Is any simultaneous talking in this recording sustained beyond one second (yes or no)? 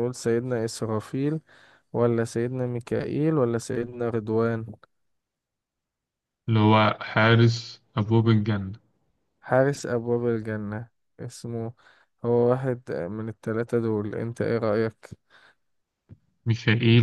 no